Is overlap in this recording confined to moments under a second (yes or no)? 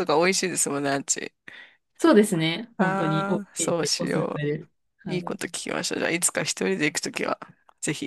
no